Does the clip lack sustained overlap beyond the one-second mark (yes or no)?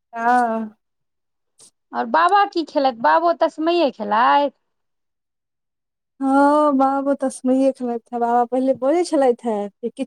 yes